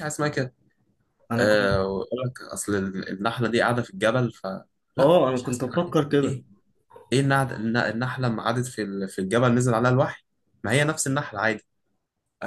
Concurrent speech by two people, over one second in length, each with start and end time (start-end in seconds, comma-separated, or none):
5.0-6.4